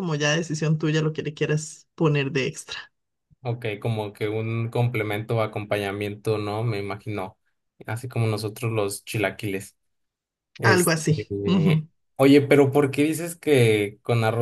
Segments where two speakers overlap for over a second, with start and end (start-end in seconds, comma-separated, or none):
10.6-11.9